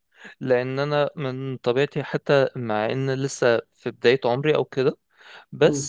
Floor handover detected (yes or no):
no